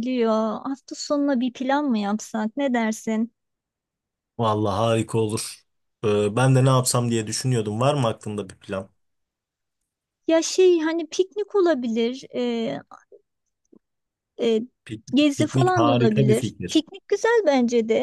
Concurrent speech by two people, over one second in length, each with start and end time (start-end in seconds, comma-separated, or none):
15.1-16.8